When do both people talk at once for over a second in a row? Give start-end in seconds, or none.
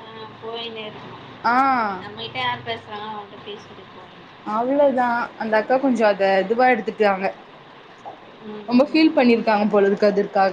none